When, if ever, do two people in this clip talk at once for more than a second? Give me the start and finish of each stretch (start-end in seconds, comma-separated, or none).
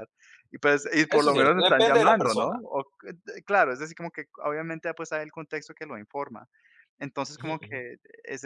1.1-2.6